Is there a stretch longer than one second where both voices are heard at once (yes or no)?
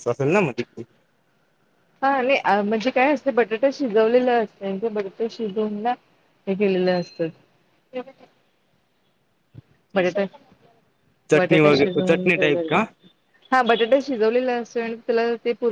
yes